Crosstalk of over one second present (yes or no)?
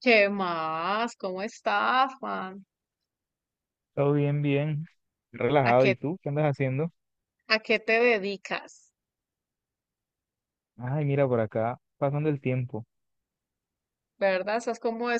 no